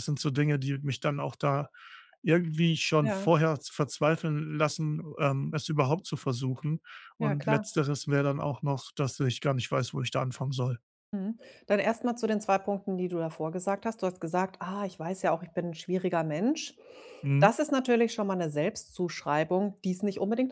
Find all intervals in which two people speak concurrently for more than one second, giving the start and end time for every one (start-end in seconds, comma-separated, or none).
none